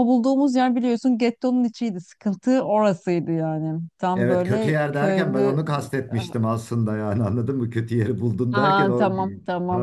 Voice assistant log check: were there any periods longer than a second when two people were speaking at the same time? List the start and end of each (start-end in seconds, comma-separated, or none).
4.1-5.6